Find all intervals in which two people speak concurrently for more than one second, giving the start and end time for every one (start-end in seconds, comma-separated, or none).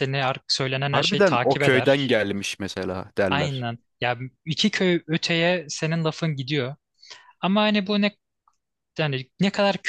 0.9-2.2